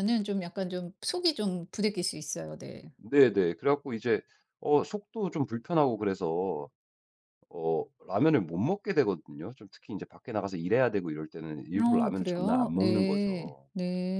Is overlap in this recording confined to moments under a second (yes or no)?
no